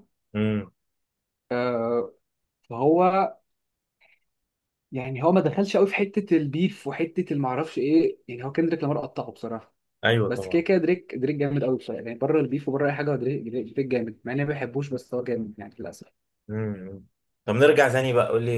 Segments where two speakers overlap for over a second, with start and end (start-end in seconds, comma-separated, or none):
none